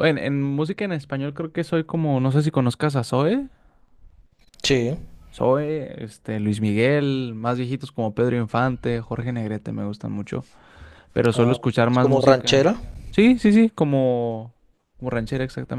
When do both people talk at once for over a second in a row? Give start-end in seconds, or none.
11.3-12.7